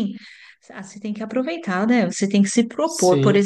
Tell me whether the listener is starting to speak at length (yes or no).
no